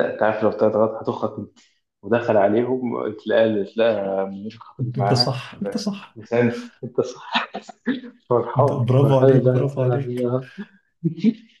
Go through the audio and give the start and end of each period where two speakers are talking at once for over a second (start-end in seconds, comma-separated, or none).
8.6-10.3